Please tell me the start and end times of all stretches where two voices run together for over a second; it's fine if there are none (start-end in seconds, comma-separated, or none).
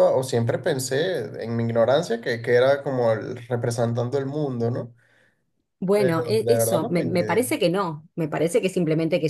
5.9-7.4